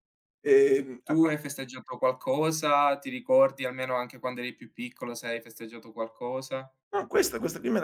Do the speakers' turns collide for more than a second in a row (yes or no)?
no